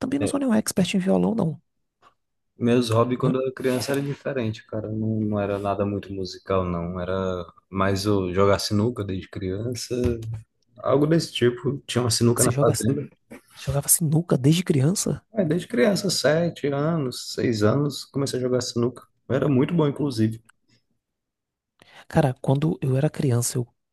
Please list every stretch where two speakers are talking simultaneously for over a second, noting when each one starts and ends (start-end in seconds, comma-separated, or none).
none